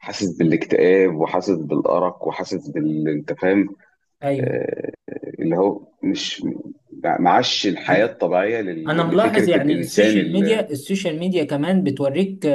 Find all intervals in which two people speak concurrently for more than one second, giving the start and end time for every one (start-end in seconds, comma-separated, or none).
8.9-10.6